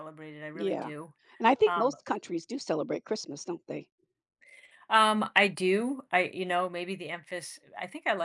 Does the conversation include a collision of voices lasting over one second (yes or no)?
no